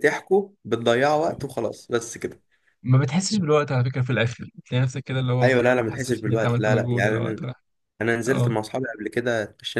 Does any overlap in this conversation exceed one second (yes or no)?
yes